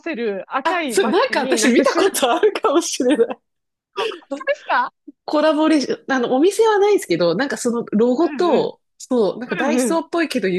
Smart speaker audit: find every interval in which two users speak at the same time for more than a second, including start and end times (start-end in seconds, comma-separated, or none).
0.6-2.2